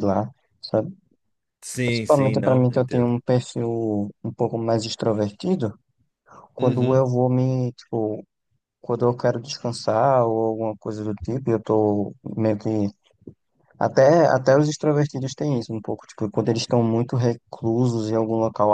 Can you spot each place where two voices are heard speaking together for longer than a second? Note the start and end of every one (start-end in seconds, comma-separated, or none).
1.9-3.2